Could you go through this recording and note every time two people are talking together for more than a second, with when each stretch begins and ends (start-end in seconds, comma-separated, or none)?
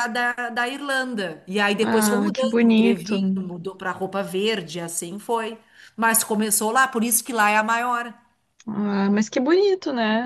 1.8-3.2